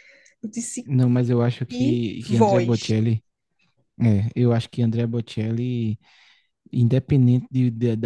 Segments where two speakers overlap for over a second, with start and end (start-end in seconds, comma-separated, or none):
1.7-2.9